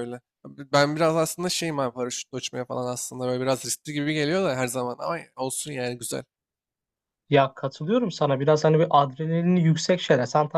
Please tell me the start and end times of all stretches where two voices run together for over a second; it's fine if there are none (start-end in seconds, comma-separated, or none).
none